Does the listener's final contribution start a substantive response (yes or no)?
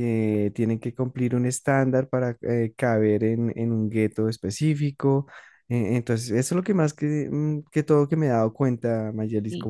yes